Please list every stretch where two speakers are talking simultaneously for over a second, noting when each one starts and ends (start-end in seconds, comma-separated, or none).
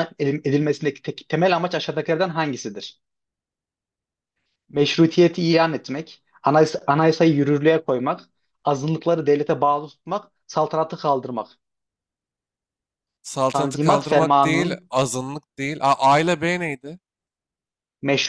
13.5-14.9